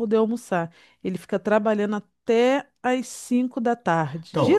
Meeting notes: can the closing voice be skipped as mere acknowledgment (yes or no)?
no